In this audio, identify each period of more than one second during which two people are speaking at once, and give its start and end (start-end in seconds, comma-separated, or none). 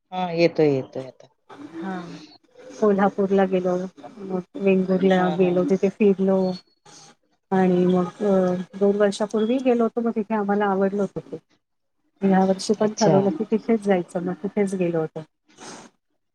none